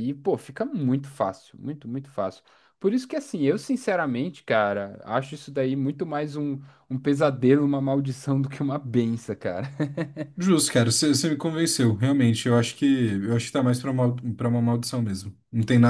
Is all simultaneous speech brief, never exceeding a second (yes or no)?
yes